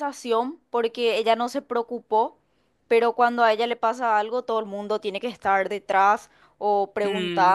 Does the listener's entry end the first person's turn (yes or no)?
no